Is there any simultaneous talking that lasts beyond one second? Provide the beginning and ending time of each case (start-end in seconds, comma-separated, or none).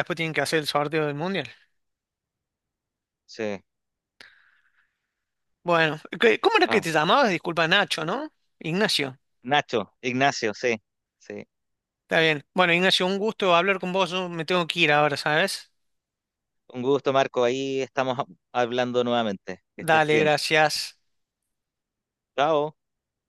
none